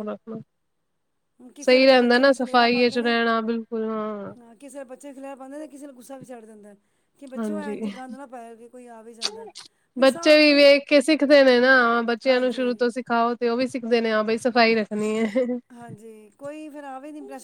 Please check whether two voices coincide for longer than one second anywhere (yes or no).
yes